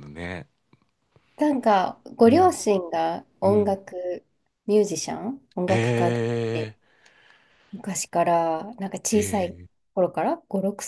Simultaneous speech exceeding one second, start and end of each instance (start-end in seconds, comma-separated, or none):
none